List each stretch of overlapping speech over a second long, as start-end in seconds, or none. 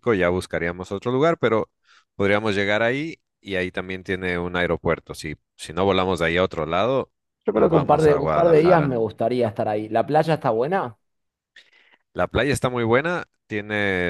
7.5-9.0